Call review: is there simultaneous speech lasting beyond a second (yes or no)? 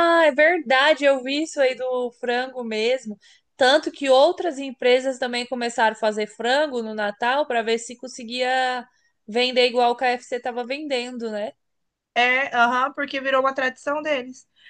no